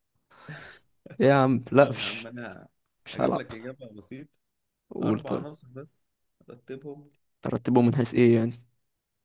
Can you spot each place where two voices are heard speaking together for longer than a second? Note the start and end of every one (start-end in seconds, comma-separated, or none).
none